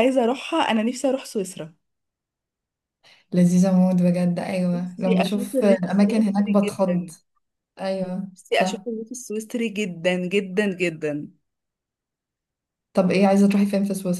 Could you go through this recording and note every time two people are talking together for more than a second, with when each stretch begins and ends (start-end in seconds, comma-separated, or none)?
4.7-7.1